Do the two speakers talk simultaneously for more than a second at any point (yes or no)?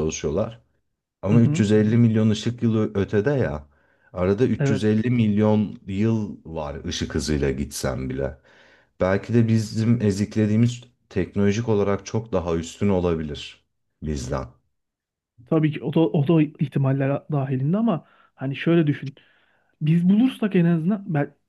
no